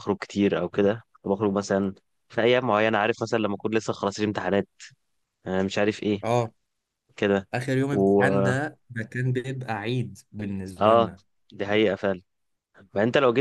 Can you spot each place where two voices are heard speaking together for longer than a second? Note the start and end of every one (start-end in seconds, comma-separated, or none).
none